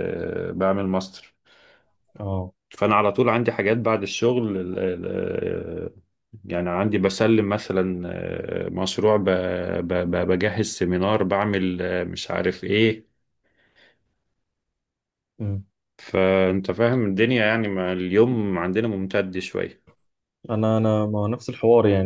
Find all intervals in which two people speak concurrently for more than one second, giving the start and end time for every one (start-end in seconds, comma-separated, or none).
none